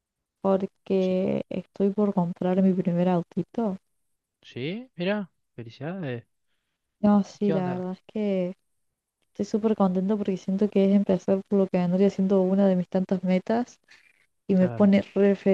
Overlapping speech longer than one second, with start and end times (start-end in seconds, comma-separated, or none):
none